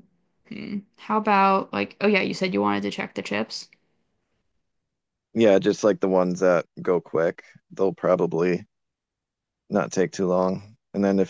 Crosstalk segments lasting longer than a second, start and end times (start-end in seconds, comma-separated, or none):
none